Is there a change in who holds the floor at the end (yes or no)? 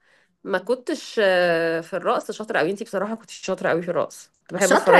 yes